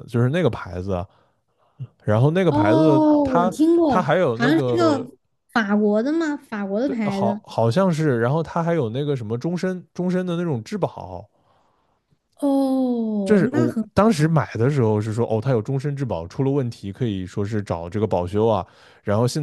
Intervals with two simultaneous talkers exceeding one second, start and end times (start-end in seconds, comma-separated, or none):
2.5-5.1